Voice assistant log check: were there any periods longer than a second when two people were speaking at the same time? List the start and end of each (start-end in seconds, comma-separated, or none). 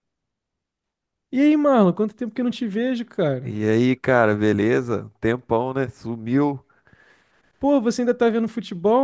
none